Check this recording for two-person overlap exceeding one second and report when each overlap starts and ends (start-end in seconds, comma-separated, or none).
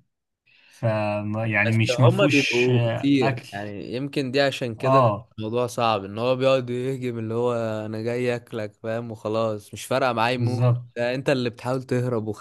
1.6-3.5